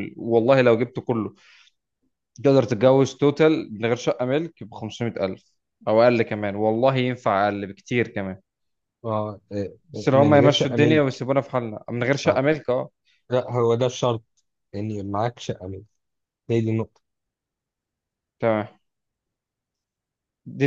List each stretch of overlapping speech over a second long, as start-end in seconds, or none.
10.0-11.2